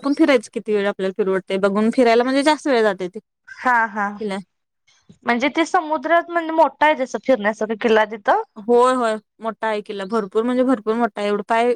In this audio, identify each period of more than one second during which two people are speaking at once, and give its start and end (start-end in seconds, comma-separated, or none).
none